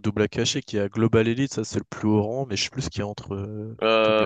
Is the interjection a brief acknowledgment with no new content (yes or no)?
no